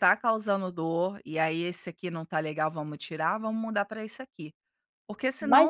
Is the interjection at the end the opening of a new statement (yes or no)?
yes